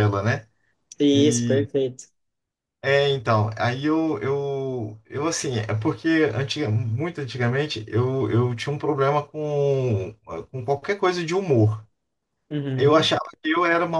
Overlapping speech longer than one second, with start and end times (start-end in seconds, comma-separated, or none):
none